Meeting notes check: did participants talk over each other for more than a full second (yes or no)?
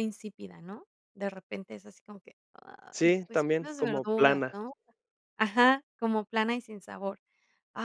yes